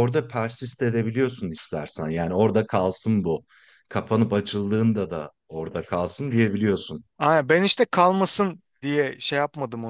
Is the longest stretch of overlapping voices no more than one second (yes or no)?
yes